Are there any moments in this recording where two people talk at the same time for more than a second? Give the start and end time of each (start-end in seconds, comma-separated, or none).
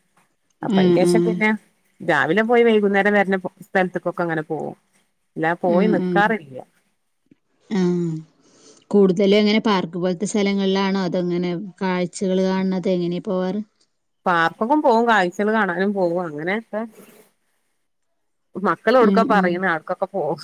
none